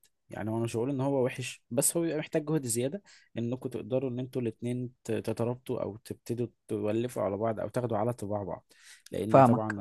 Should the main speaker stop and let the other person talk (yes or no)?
no